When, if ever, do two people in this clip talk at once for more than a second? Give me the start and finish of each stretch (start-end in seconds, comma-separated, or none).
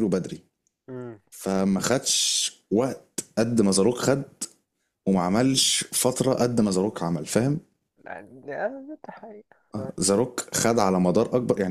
none